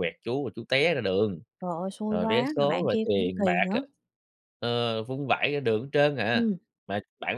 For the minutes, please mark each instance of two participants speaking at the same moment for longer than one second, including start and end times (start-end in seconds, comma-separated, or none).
2.1-3.8